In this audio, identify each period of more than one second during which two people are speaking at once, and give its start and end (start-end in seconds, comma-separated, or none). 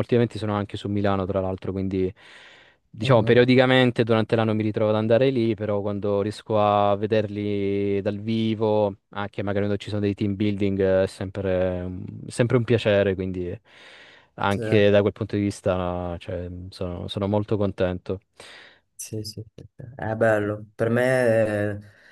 none